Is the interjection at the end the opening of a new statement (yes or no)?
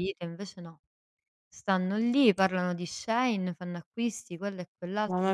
yes